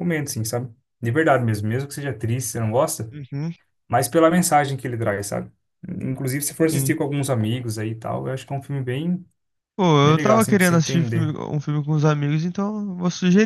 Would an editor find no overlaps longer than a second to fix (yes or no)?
no